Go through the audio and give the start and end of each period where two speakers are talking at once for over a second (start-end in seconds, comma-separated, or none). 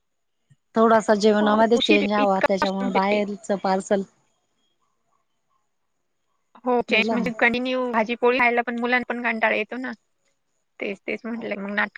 1.4-3.2